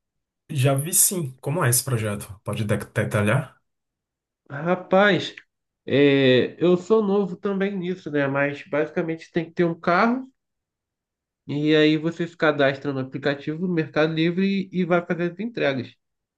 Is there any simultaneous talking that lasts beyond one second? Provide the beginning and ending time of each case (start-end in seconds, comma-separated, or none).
none